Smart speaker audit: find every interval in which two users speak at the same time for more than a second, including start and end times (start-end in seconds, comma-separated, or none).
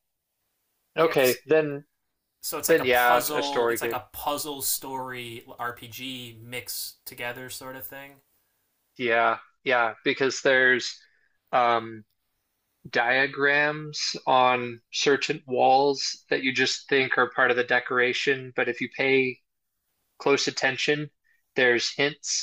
2.6-4.0